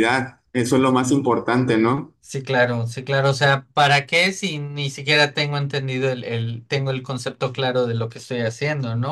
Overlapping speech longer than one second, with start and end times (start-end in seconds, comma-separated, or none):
none